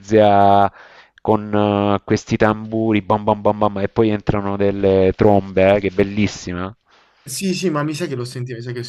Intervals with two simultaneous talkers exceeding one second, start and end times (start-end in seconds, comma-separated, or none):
none